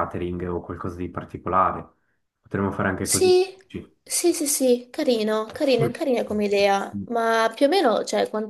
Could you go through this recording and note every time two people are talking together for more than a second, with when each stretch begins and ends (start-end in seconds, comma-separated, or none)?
none